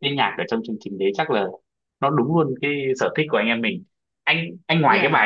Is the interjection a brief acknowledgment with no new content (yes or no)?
yes